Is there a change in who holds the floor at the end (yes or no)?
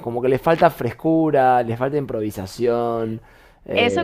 yes